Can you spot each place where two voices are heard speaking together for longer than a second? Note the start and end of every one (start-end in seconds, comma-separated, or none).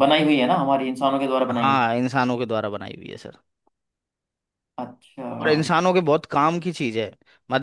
none